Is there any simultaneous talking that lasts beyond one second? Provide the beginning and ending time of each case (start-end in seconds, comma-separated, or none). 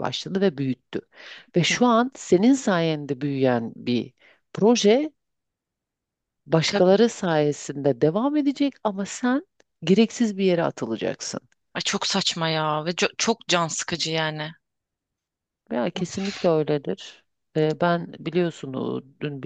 none